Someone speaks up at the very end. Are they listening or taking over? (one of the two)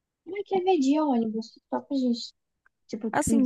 taking over